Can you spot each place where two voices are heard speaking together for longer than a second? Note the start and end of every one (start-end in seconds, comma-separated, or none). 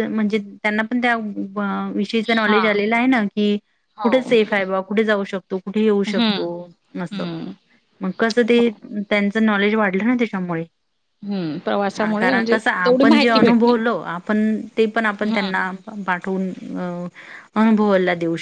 12.2-13.7